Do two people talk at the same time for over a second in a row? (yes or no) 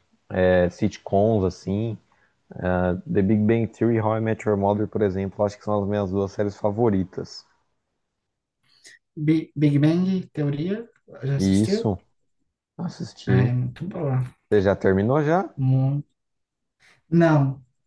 no